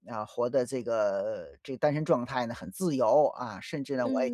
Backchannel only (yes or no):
no